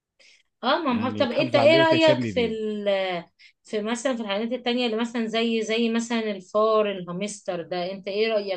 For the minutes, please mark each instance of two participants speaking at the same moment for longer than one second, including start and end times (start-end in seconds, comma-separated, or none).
0.8-2.5